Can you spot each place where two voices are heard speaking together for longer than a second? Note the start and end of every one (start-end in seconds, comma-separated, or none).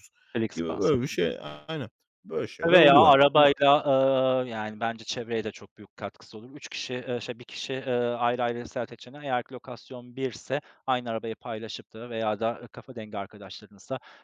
none